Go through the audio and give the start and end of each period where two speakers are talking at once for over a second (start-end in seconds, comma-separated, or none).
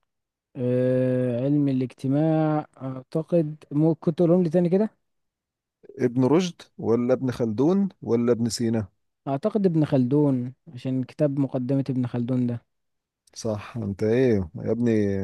none